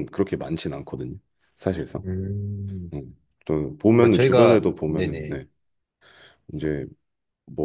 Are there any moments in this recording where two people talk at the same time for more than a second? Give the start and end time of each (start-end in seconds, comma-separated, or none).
4.0-5.4